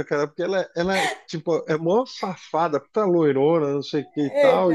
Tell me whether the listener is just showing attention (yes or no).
yes